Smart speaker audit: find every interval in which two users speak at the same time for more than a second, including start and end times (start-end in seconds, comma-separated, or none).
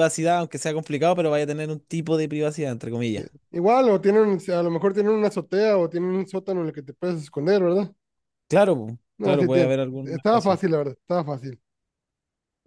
9.2-10.6